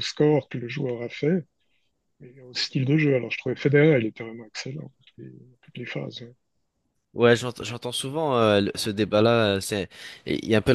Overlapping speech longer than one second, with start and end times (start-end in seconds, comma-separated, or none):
none